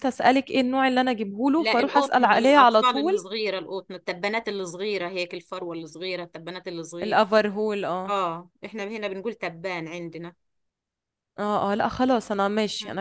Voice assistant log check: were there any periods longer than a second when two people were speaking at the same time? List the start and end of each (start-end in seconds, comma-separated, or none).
1.6-3.2